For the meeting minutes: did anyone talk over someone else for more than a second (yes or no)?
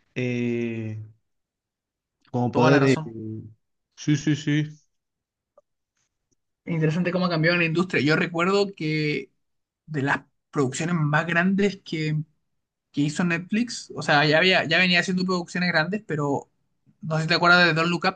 no